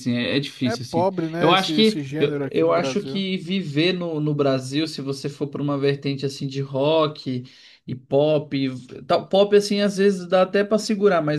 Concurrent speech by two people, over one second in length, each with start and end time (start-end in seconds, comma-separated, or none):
0.7-3.2